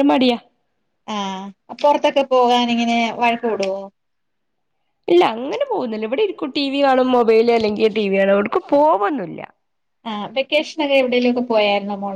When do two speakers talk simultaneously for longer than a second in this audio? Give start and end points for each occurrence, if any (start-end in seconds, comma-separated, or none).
none